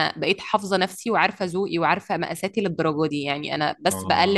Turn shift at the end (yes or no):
no